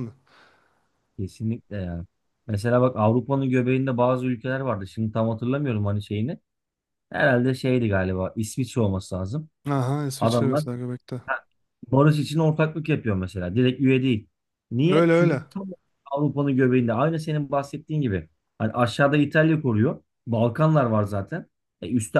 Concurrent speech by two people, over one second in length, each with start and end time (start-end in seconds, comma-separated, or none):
none